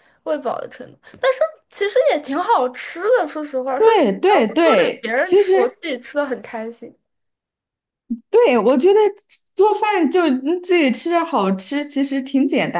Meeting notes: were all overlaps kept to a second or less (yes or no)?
no